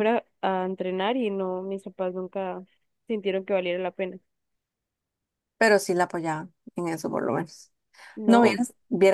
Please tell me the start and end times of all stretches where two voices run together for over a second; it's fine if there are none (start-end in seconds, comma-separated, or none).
none